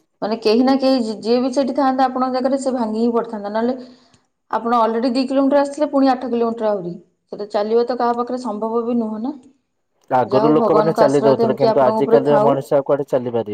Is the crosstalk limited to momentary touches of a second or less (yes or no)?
no